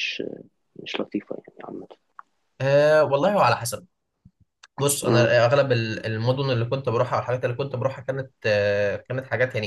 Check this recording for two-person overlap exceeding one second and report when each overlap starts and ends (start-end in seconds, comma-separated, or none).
none